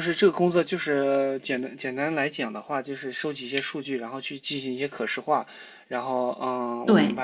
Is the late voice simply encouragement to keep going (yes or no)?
yes